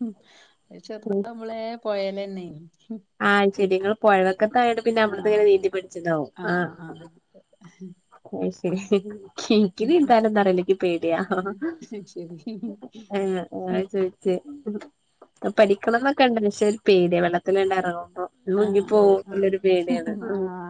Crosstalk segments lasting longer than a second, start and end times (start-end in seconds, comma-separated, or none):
18.7-20.1